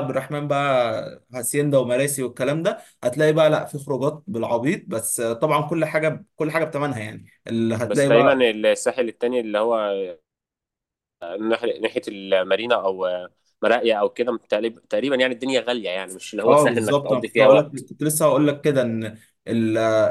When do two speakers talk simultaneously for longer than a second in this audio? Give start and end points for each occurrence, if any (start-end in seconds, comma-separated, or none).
16.4-17.9